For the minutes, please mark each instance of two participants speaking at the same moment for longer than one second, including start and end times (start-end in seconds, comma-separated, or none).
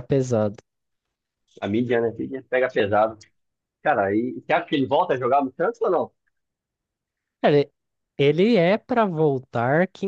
none